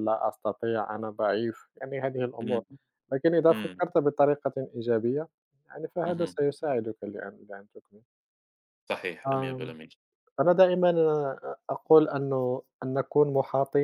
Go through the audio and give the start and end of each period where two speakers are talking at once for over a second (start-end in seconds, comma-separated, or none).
none